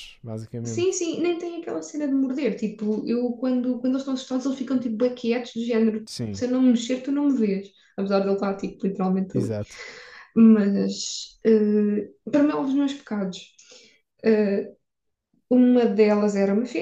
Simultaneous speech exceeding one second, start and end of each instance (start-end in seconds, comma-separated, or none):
none